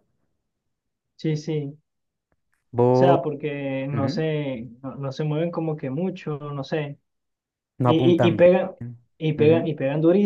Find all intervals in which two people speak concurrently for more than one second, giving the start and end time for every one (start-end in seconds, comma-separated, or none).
none